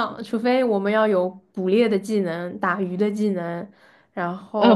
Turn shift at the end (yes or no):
yes